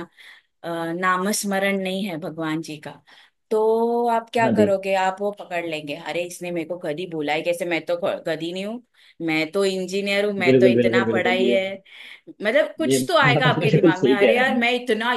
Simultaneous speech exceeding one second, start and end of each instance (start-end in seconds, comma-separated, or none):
10.5-11.7, 12.9-14.6